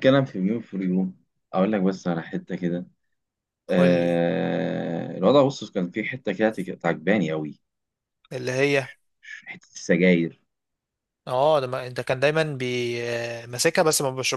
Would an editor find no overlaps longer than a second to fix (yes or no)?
yes